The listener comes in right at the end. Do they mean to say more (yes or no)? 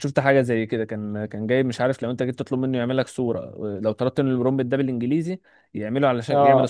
no